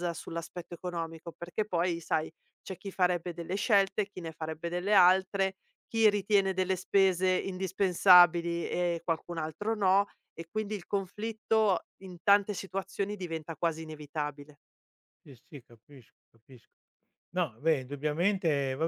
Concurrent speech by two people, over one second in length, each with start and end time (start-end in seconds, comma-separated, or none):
none